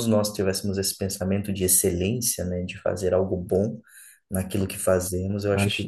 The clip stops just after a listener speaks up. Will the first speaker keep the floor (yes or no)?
yes